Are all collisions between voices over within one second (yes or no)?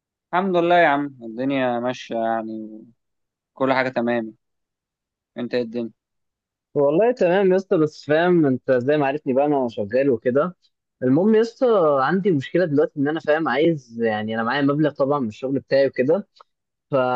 yes